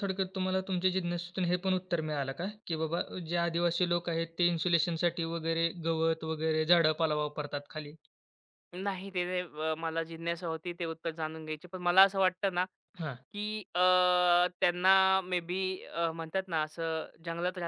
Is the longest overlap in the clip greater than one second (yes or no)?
no